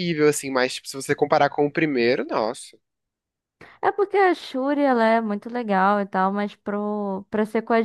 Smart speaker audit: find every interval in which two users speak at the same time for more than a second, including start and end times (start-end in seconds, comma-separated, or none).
none